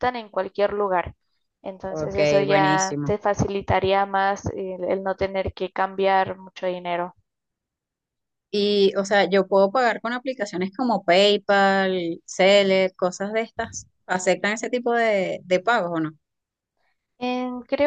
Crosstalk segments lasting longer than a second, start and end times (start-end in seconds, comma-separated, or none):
1.9-3.1